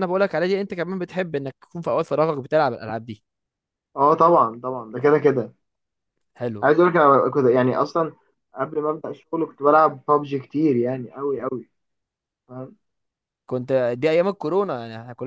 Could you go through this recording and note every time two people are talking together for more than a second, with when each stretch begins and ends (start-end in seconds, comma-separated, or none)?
none